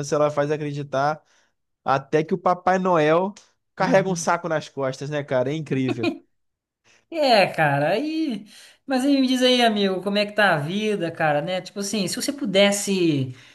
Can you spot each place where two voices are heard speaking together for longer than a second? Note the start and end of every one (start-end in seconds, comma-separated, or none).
none